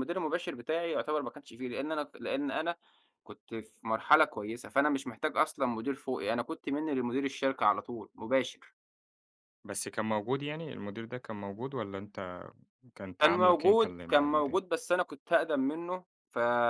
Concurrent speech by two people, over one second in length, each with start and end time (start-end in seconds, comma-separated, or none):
13.2-14.6